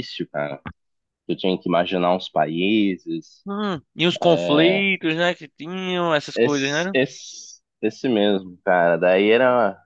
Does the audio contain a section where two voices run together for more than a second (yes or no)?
no